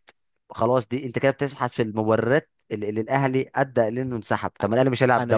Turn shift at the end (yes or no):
yes